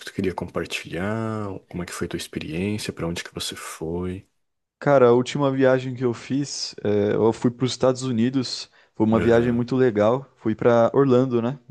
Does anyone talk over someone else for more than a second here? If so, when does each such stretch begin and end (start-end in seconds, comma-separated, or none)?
none